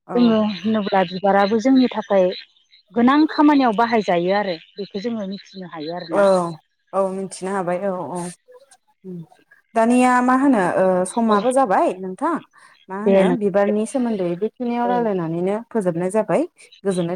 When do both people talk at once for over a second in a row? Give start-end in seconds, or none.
none